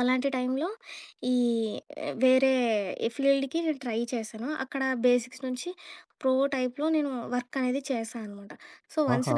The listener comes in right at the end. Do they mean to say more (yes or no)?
no